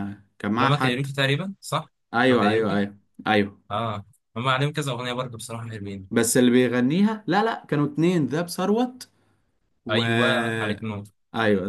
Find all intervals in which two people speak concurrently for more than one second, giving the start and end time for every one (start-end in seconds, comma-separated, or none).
none